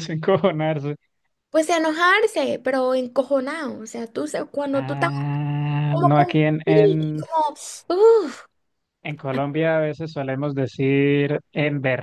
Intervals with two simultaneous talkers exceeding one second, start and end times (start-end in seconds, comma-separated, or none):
5.9-7.2